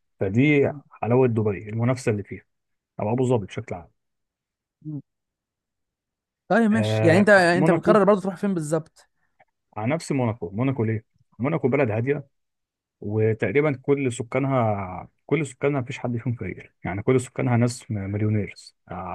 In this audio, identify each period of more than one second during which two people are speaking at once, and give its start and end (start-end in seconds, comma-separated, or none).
6.7-8.0